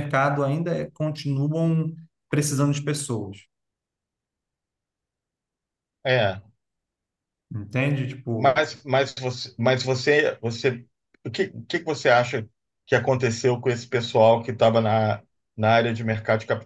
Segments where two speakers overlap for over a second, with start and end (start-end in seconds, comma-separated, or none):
none